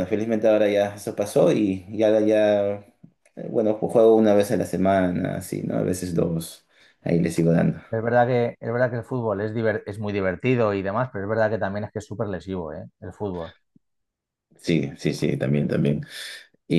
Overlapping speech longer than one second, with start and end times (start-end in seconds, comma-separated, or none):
none